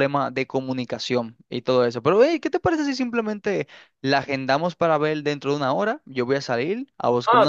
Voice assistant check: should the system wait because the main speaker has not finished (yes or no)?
no